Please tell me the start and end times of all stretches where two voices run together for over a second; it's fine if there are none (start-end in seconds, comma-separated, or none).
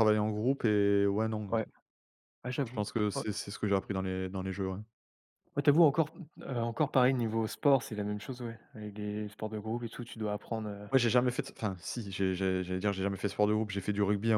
none